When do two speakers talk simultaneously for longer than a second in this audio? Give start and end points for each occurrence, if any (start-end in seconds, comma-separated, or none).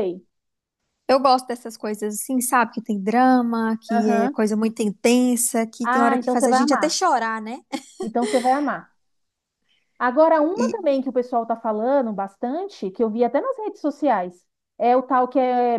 5.8-7.0